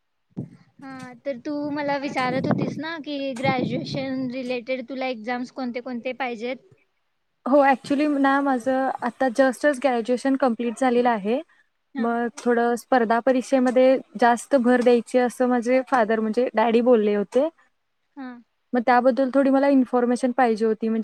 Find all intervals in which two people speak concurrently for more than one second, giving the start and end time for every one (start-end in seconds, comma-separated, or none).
none